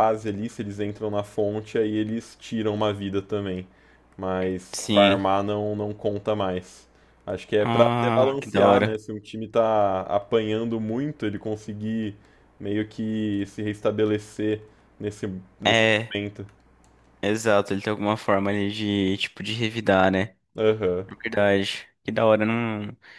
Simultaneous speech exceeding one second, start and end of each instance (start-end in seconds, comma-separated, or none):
7.6-9.0